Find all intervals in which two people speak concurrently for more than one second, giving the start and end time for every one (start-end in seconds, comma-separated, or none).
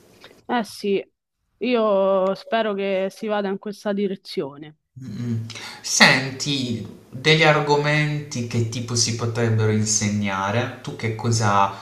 none